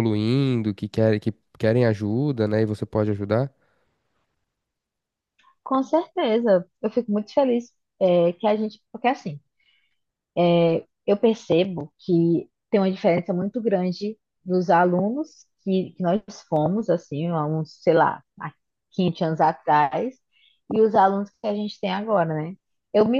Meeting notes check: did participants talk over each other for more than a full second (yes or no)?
no